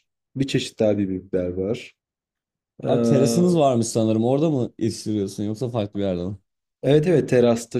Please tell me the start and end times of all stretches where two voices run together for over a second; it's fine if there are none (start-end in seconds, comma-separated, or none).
none